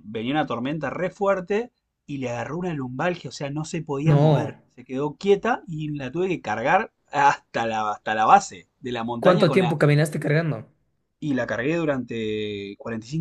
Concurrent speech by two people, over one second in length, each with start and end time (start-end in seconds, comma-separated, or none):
none